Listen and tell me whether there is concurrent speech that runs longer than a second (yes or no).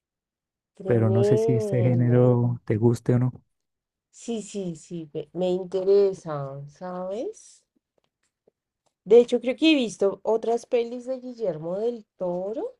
yes